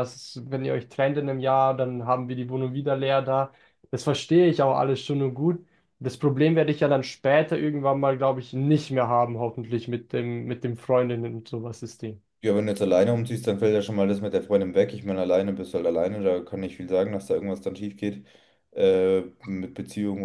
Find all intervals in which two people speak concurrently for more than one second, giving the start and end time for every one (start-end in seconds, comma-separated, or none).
none